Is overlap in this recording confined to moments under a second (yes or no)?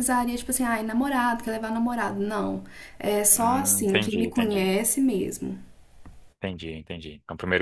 no